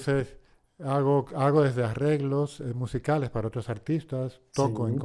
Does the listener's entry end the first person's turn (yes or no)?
no